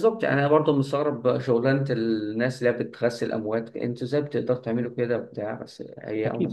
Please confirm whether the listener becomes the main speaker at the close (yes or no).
yes